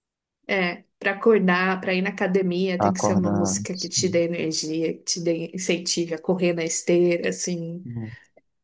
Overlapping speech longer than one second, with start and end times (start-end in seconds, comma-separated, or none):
2.8-4.2